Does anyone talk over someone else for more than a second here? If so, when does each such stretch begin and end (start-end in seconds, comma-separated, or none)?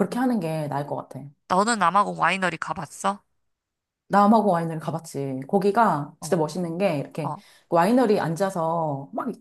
none